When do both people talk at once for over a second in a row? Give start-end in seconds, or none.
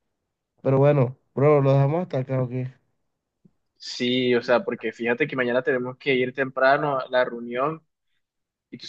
none